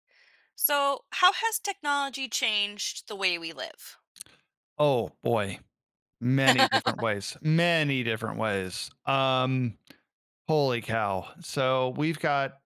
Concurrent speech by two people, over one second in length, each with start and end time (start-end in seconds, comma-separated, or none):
none